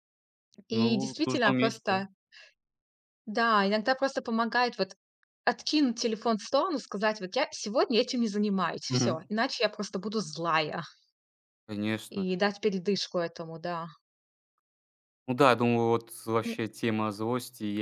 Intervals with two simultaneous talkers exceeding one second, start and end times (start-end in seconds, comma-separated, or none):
0.7-2.0